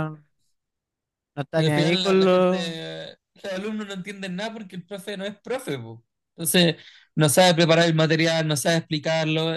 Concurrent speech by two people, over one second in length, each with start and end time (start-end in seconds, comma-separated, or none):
1.5-2.8